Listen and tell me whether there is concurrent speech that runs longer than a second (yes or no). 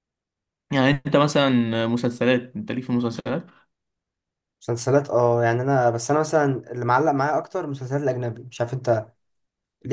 no